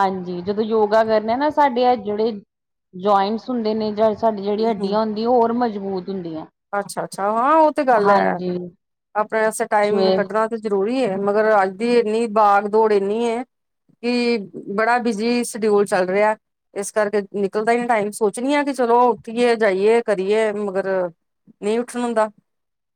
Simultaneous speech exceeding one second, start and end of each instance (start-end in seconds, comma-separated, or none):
none